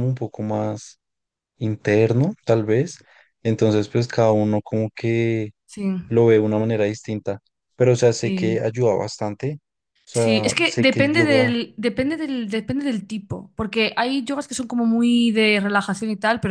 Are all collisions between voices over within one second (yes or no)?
no